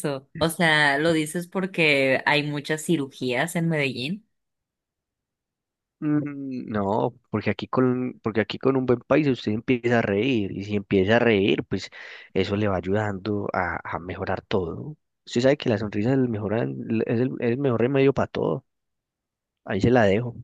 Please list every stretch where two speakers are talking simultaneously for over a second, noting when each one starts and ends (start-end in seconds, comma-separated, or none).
none